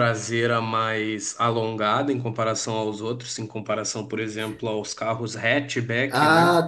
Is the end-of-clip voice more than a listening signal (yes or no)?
yes